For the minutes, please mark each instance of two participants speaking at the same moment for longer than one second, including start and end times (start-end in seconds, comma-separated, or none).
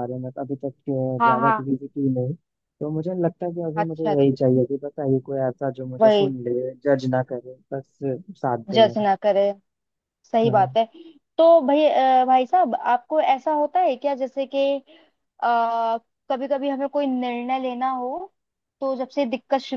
none